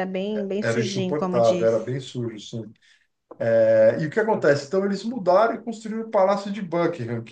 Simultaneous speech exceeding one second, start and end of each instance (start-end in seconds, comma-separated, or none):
0.6-1.9